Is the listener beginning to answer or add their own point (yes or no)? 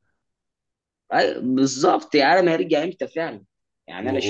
yes